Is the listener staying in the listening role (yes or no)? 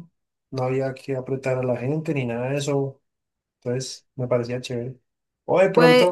yes